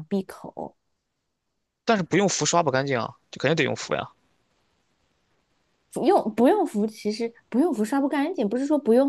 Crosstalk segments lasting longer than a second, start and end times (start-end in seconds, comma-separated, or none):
none